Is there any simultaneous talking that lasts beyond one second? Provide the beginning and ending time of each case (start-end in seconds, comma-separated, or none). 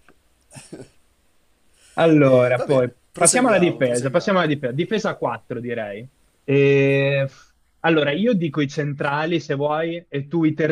2.3-4.4